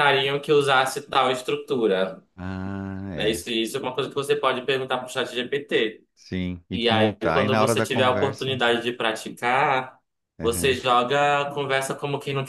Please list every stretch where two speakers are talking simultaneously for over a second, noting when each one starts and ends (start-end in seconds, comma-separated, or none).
6.7-8.6